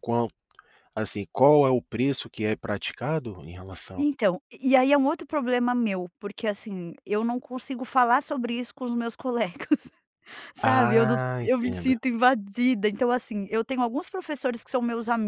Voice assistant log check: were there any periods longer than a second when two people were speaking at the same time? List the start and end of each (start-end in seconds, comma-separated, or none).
10.6-11.9